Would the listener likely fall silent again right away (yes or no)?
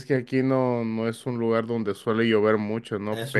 yes